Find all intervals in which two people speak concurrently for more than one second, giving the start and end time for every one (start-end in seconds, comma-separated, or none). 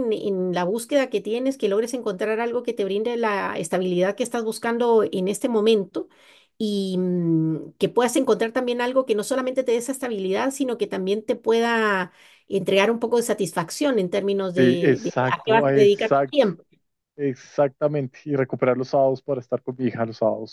14.6-16.4